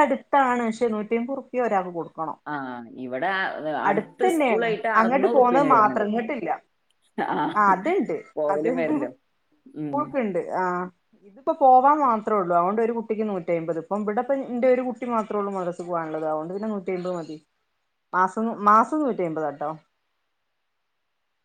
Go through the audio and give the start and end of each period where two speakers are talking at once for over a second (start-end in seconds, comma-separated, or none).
3.9-6.0